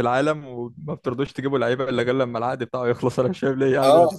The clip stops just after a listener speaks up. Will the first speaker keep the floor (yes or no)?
no